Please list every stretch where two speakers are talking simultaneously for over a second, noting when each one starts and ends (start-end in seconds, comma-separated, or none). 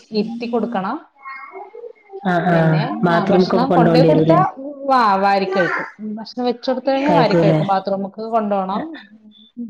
2.5-4.4